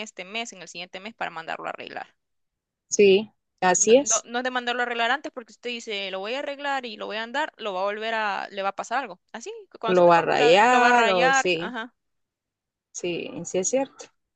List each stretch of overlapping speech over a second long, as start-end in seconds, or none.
9.9-11.7